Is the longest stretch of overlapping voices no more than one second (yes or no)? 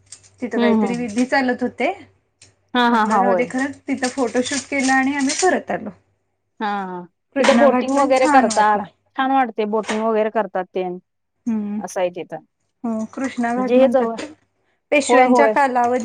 no